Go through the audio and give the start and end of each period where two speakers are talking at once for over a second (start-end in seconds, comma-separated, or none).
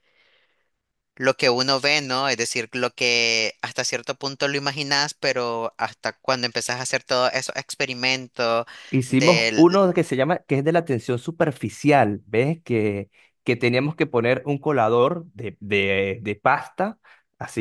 none